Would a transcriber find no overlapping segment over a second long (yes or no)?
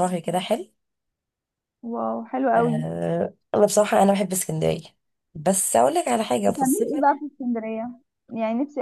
yes